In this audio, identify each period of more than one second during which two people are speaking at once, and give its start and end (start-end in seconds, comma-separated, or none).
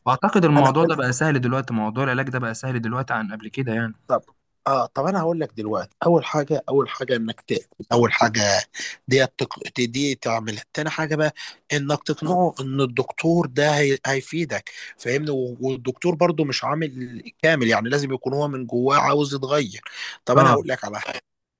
none